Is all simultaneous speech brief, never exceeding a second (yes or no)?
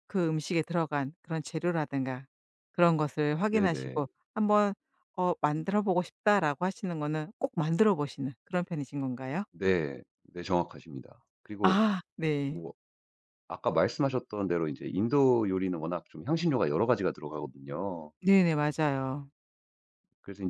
yes